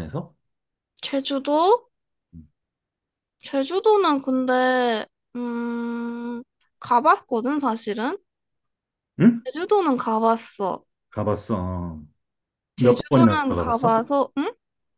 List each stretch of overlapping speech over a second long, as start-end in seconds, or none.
12.8-14.0